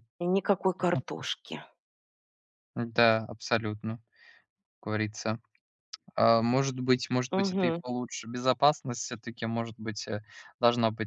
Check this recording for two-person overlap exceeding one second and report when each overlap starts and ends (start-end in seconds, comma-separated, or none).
none